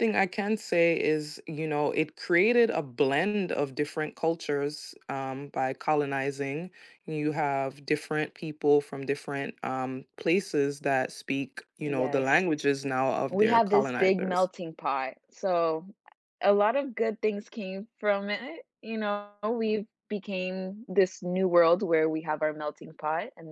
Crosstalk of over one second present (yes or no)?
yes